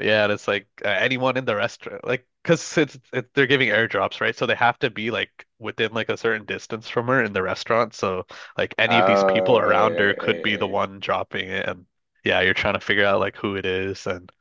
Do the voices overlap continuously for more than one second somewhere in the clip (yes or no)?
yes